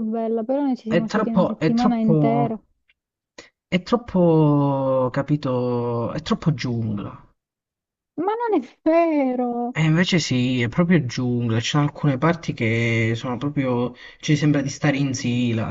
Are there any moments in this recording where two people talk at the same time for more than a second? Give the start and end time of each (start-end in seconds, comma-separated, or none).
0.9-2.6